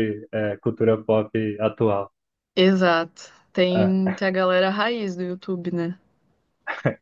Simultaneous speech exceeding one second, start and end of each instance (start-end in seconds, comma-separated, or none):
none